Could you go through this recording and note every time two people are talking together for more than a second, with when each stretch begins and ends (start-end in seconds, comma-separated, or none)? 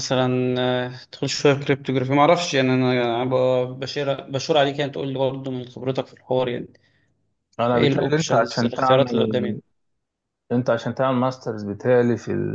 7.7-9.6